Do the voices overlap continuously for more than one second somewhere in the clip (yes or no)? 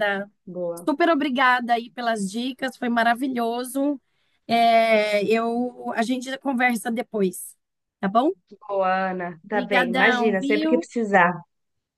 yes